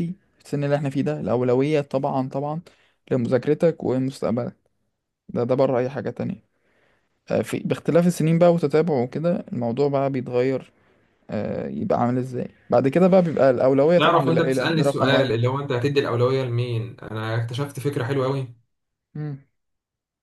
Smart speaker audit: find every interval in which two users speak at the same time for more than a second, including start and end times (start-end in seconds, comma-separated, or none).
14.0-15.3